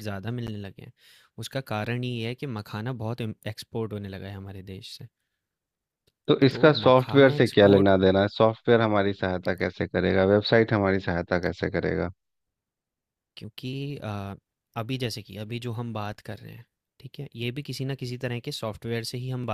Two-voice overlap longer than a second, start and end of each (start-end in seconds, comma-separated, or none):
6.5-7.9